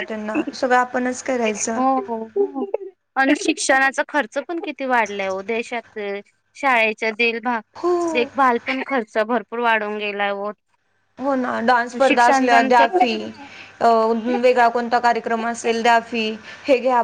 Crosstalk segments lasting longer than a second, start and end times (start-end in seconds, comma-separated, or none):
none